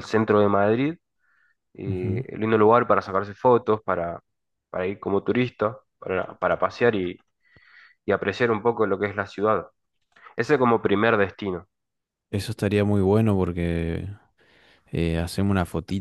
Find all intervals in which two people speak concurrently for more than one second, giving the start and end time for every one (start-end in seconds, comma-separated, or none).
none